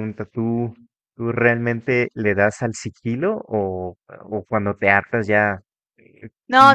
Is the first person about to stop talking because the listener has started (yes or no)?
yes